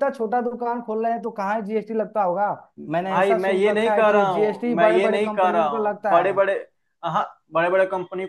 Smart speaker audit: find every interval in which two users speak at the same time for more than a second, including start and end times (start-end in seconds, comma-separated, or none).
2.9-6.4